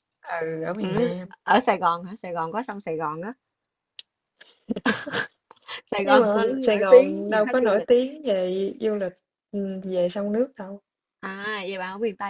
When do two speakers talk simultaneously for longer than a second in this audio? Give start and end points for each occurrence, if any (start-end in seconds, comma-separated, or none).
6.0-7.9